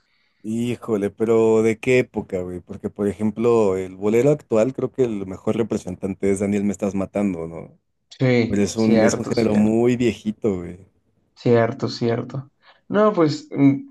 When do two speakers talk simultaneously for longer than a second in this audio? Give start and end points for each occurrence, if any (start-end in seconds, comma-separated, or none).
8.5-9.7